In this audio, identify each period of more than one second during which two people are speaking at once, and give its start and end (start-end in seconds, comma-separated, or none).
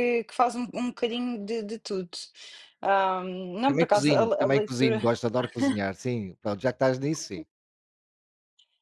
3.7-5.1